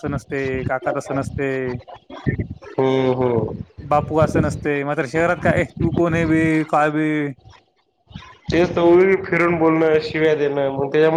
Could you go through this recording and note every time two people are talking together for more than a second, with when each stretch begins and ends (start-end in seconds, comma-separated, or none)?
none